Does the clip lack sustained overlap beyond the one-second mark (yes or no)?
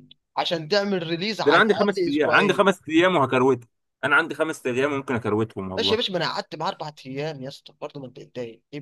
no